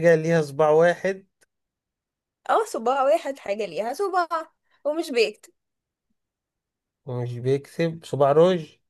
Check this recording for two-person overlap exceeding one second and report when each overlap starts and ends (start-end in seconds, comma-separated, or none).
none